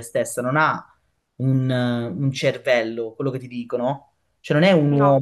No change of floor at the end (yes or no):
yes